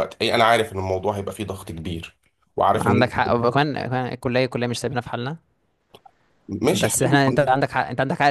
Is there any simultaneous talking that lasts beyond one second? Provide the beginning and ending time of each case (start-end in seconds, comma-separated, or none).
none